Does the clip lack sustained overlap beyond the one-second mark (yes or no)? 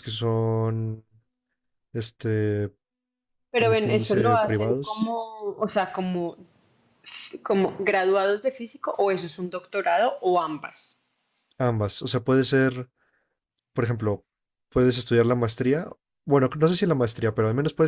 no